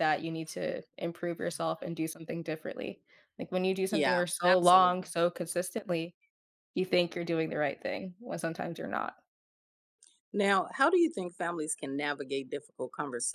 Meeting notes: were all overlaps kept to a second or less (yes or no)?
no